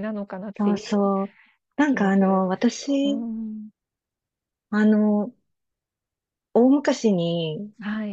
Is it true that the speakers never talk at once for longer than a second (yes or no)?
no